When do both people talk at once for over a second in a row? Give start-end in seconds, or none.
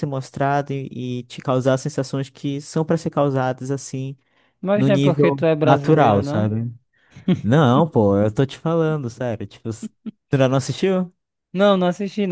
4.7-6.5